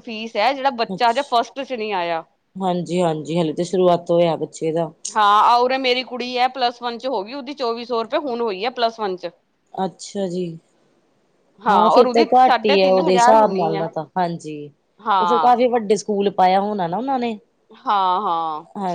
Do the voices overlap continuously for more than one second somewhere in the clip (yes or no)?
yes